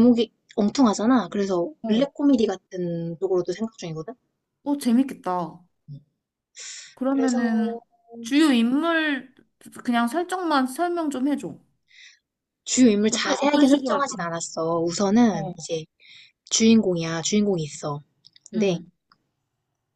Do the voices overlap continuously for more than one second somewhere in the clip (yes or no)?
yes